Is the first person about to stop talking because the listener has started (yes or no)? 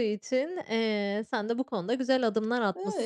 no